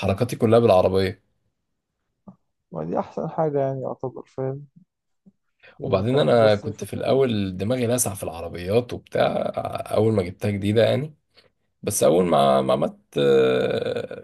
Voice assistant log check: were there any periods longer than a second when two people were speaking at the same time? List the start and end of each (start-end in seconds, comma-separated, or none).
5.8-7.2